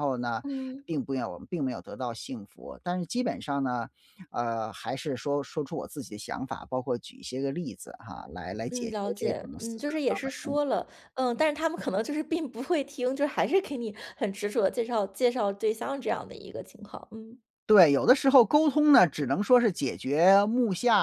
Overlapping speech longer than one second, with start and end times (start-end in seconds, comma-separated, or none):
8.7-10.8